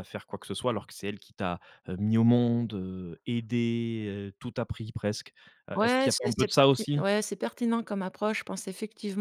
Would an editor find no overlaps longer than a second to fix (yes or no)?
no